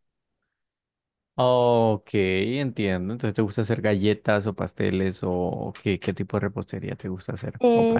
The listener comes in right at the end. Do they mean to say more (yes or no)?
yes